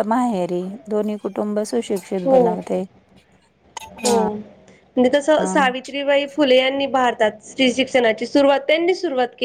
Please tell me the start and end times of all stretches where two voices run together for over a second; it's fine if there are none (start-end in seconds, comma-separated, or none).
none